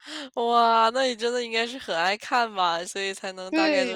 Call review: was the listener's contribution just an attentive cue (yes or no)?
no